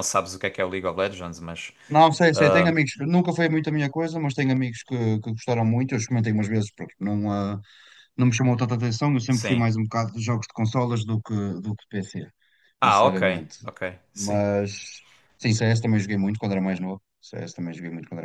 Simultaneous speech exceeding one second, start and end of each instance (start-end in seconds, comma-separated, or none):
none